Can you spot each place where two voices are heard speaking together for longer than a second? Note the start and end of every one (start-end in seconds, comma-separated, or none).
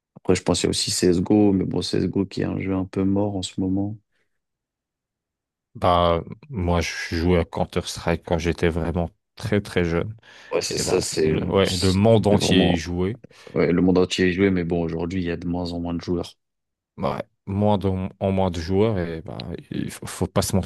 10.8-12.8